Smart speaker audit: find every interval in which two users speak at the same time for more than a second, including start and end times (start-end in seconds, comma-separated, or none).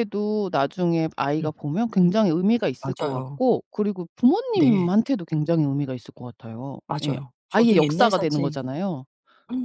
6.9-8.6